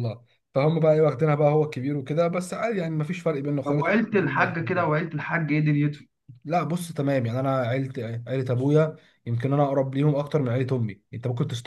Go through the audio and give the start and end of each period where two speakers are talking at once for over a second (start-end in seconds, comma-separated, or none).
3.6-4.9